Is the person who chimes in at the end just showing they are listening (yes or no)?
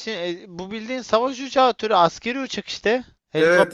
no